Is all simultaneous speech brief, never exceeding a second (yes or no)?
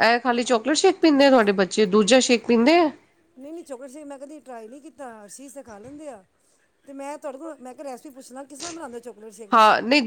yes